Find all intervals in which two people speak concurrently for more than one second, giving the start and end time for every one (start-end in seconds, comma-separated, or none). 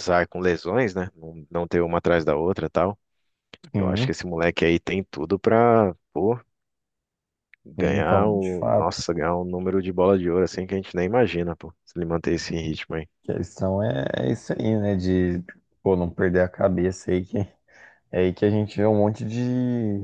7.8-9.1